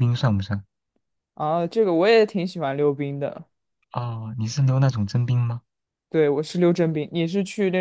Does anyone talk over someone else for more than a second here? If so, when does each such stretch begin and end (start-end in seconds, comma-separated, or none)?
none